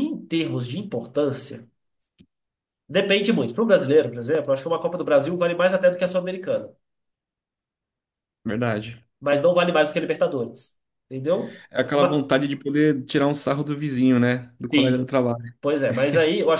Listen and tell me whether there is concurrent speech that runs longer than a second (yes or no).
no